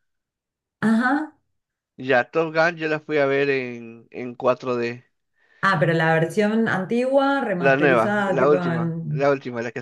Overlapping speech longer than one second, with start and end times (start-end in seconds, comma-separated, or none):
7.6-9.3